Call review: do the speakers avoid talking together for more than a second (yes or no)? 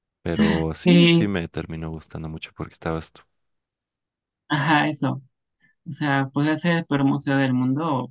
yes